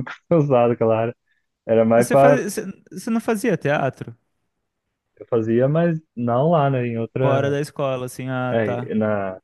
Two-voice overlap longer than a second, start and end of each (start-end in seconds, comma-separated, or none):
none